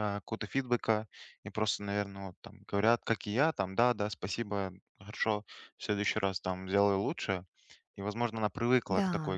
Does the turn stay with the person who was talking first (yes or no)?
yes